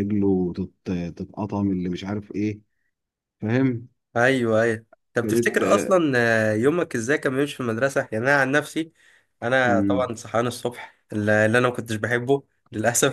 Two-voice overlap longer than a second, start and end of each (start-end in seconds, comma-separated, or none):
none